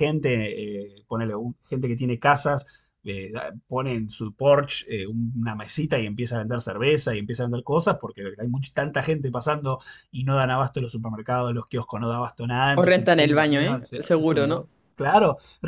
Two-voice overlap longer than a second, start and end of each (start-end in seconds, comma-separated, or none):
12.8-14.7